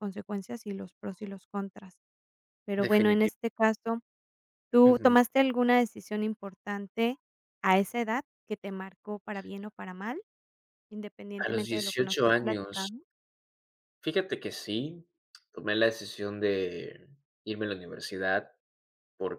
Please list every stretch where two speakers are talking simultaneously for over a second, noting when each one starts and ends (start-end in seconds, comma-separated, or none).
11.4-12.9